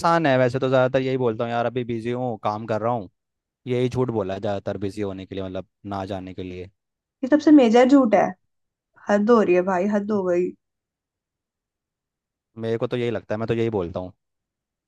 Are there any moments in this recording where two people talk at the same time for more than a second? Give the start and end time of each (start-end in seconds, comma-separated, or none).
none